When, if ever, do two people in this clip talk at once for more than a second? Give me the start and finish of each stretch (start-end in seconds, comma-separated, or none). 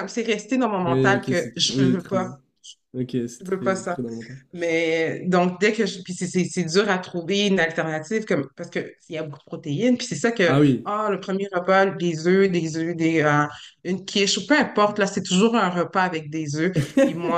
0.9-2.3